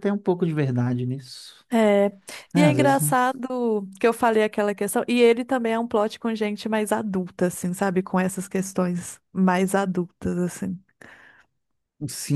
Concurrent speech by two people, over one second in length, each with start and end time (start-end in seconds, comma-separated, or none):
none